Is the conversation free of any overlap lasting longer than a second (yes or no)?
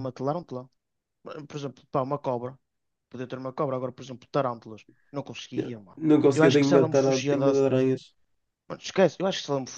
no